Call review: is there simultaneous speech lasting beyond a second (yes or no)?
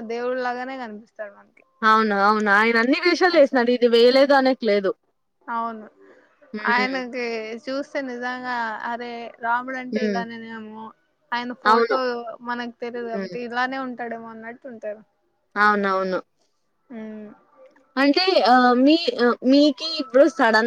no